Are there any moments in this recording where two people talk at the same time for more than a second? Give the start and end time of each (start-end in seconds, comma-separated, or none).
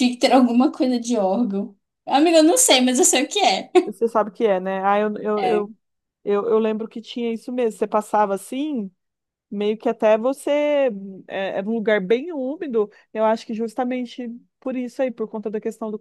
none